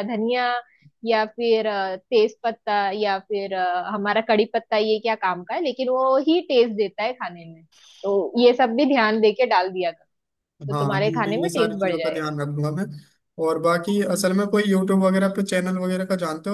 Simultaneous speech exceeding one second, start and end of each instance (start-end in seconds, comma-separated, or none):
10.7-12.3